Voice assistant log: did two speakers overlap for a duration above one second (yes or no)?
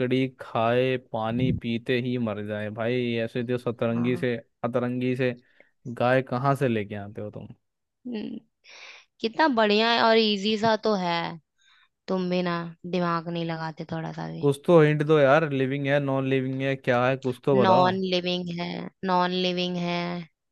no